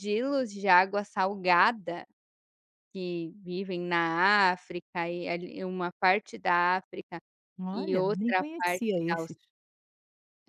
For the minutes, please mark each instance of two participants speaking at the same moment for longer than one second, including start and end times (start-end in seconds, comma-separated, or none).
7.7-9.3